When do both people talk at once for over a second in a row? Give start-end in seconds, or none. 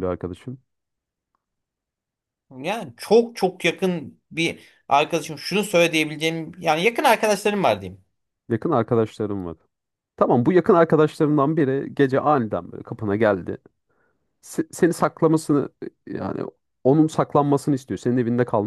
none